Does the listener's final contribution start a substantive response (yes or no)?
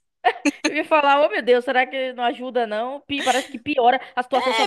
yes